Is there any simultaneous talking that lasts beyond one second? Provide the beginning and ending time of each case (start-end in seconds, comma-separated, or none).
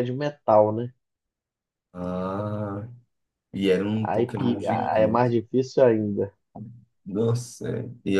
4.0-5.3